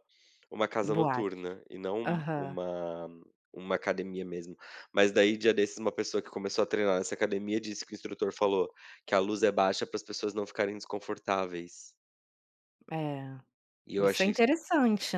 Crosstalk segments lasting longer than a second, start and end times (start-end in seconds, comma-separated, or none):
none